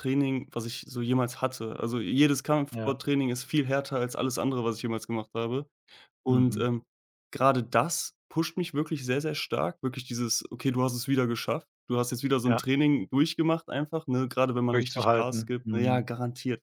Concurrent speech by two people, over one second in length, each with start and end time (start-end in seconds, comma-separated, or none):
14.7-16.1